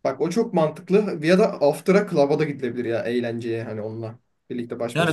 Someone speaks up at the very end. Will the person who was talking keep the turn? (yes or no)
no